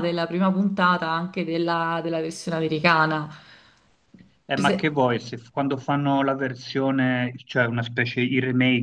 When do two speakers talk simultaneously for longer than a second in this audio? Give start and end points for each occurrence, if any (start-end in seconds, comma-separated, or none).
none